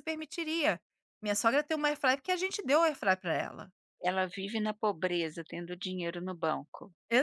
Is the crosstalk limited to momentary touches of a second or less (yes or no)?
yes